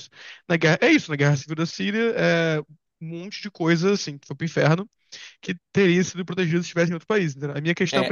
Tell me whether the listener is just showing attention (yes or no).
no